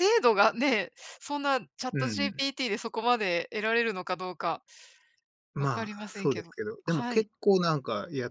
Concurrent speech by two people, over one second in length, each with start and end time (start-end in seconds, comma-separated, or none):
5.6-7.3